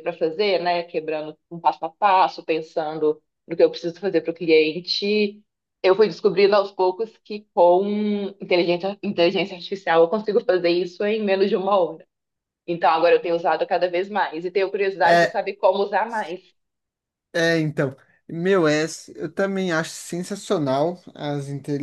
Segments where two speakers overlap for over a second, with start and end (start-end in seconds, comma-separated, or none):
none